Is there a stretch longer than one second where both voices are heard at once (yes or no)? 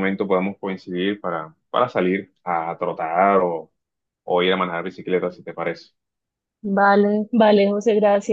no